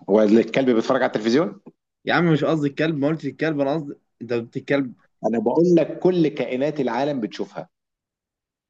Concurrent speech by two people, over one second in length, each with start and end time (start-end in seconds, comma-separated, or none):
none